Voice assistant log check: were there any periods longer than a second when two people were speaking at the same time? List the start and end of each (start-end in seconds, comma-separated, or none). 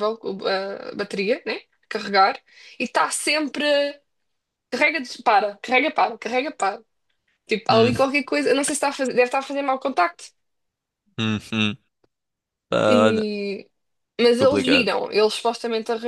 none